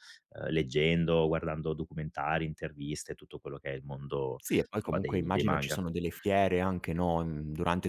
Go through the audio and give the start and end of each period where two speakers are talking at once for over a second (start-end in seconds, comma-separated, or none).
4.4-5.8